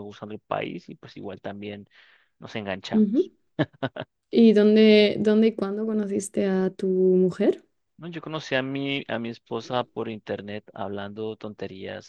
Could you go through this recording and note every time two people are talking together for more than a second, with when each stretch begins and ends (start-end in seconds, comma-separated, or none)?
none